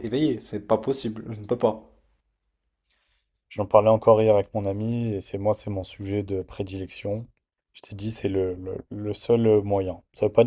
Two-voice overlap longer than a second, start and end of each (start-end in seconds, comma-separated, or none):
none